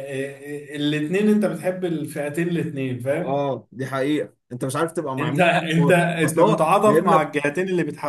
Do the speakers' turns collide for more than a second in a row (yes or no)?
yes